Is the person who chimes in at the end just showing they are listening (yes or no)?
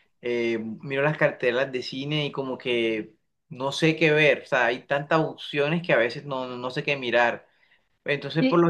yes